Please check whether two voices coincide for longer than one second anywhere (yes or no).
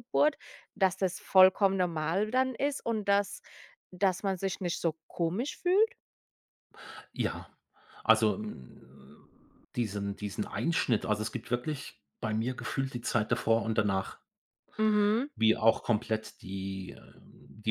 no